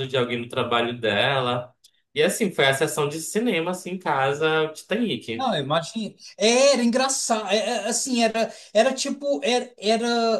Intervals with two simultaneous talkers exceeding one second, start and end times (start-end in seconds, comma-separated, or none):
none